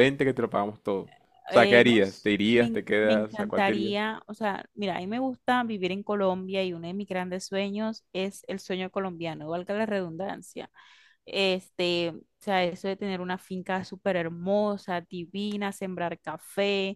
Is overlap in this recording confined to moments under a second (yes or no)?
no